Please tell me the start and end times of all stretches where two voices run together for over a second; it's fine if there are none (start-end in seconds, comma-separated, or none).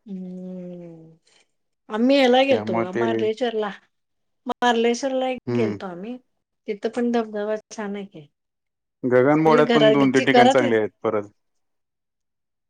9.4-10.8